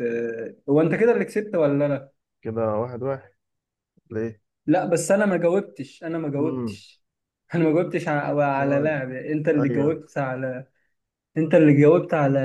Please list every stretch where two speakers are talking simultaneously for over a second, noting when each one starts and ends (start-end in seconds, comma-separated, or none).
none